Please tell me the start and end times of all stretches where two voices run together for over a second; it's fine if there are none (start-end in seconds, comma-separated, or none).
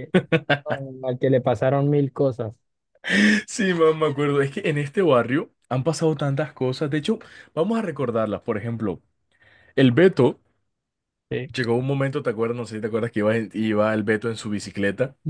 none